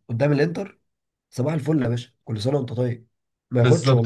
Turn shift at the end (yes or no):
yes